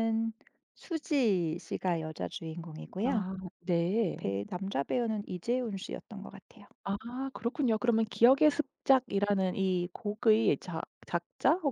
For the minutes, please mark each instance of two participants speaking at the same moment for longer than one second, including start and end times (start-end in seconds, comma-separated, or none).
none